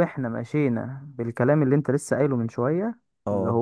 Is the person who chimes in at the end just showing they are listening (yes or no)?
yes